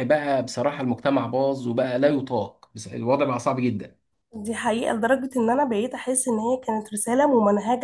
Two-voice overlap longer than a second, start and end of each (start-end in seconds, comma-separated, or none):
none